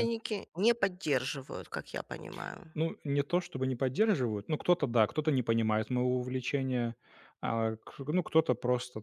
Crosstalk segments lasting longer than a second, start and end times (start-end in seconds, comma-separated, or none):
none